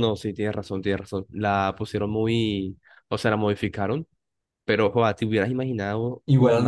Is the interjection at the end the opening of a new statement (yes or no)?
yes